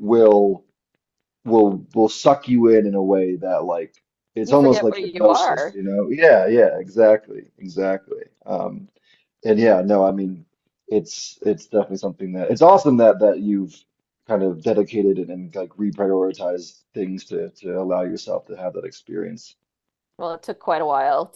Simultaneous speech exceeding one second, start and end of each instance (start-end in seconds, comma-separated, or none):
4.4-5.8